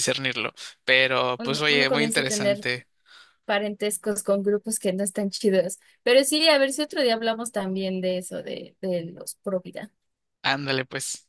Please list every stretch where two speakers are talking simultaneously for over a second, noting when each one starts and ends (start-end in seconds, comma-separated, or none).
1.4-2.7